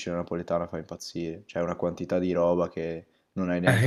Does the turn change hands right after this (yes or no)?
yes